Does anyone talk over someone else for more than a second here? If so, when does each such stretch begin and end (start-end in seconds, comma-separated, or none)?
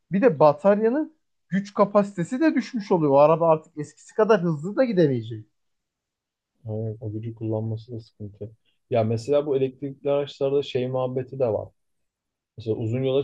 none